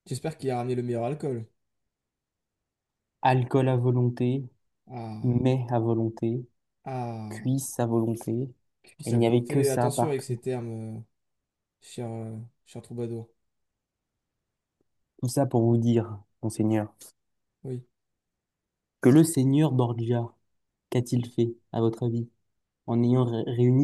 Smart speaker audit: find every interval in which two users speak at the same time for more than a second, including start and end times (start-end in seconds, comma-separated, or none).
9.0-10.4